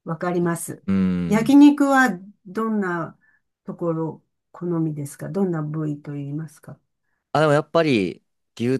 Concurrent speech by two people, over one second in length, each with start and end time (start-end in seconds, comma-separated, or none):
none